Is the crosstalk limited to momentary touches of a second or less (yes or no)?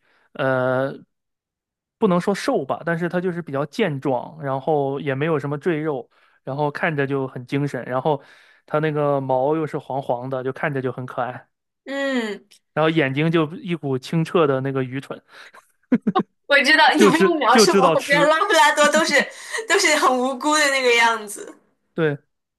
no